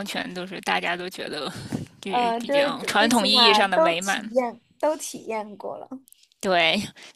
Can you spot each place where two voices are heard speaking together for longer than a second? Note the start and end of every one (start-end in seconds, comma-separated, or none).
2.1-4.3